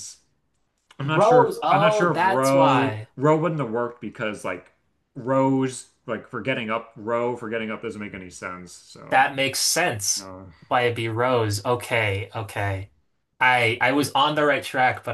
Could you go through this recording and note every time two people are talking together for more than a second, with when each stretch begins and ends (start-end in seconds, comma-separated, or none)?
1.0-3.1